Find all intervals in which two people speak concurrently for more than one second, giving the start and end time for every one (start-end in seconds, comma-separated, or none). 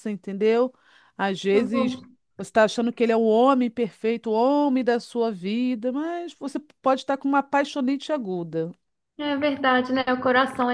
none